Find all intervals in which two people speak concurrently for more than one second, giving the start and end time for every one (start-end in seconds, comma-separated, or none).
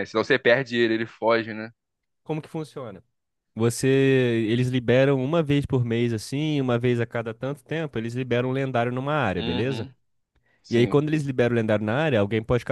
none